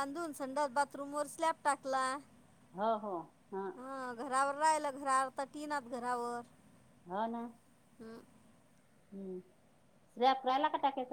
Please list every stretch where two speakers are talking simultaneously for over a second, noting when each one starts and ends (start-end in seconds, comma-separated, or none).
none